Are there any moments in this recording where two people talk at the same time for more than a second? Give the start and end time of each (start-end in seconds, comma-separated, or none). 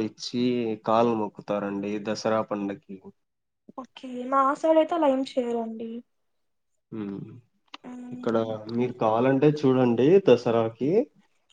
none